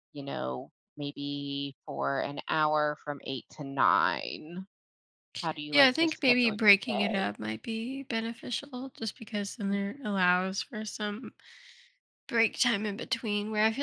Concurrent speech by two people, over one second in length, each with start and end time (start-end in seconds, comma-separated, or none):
5.7-7.3